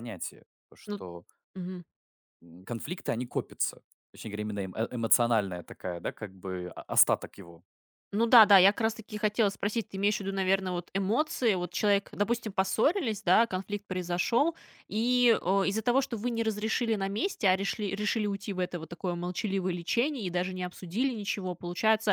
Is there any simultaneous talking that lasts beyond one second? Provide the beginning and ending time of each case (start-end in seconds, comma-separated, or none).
none